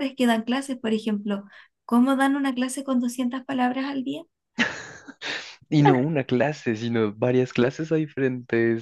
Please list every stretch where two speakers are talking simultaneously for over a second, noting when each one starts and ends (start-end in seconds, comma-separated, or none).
none